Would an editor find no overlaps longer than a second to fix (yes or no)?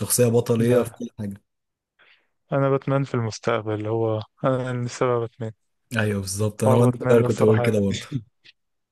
no